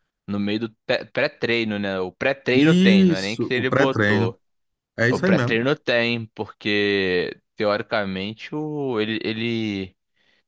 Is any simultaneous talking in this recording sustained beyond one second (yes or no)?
yes